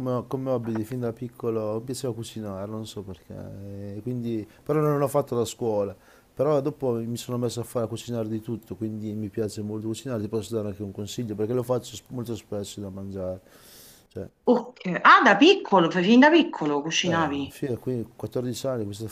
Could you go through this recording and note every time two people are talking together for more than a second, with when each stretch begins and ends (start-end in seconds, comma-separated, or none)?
none